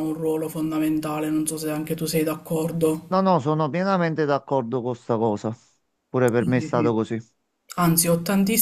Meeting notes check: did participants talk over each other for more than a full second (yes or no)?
no